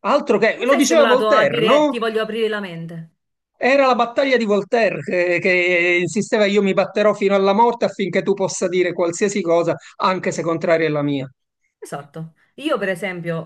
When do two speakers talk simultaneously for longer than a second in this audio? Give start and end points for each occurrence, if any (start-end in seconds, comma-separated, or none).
0.5-2.0